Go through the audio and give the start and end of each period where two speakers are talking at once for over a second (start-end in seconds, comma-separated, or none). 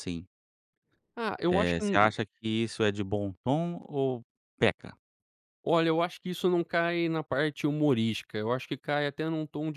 none